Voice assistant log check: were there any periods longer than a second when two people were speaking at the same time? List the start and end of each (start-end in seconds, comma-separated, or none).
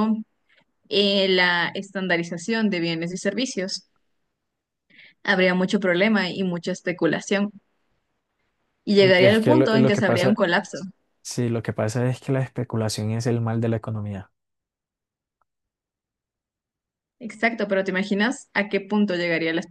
9.0-10.4